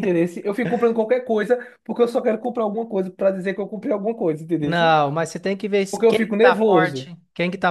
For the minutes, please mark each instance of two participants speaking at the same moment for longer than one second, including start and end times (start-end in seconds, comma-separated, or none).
5.9-7.1